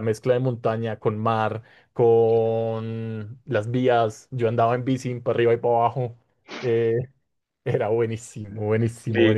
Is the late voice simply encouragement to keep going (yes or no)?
no